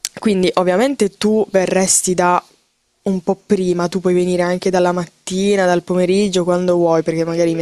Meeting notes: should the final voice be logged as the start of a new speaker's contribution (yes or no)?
yes